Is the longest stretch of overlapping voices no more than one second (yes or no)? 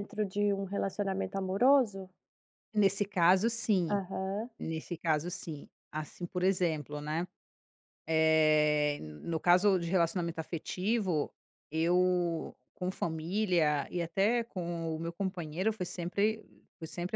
yes